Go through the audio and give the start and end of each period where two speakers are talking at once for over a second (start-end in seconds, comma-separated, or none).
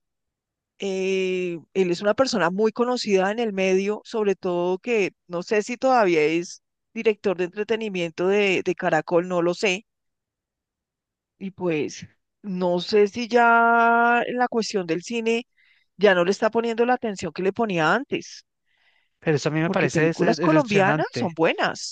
19.6-21.3